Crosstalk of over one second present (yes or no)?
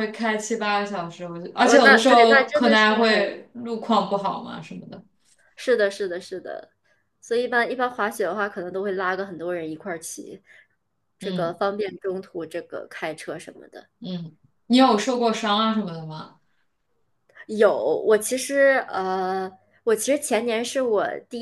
yes